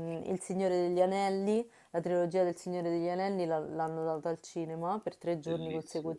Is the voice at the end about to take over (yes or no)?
no